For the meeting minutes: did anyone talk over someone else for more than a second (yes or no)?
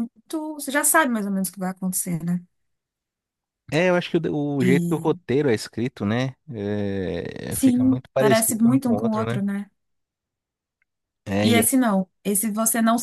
yes